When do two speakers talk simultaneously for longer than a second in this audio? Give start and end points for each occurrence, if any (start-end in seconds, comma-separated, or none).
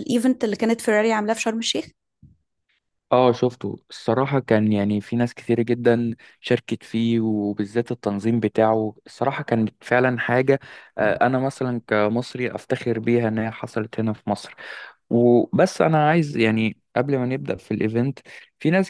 none